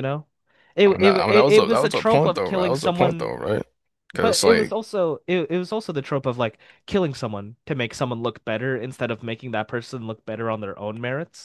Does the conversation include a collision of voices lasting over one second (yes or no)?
yes